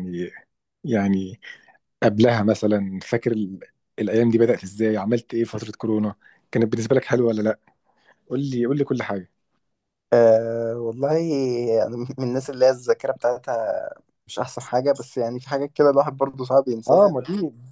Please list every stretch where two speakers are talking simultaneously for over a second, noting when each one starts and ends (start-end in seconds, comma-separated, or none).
none